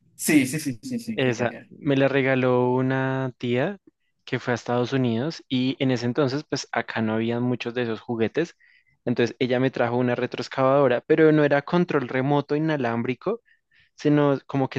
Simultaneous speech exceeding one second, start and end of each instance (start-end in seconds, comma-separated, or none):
none